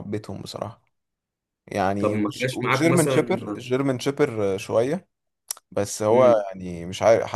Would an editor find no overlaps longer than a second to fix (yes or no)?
no